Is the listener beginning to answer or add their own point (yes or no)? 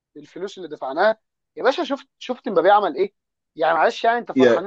no